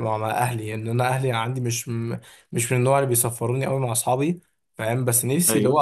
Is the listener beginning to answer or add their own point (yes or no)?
no